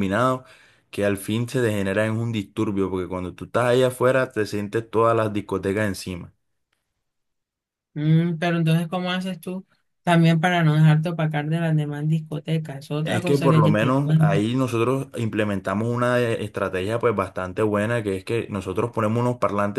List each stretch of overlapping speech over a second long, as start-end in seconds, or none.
13.0-14.5